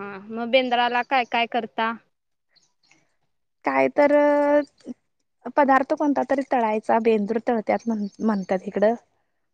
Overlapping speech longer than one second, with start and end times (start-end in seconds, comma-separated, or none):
none